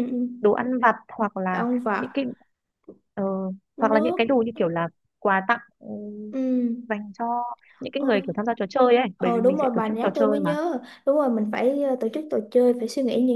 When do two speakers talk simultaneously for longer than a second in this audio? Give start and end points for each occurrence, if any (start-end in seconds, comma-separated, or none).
9.2-10.5